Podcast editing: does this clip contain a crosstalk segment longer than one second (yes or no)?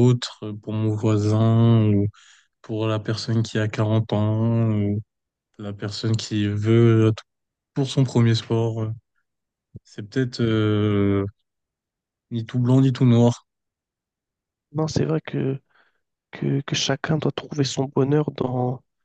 no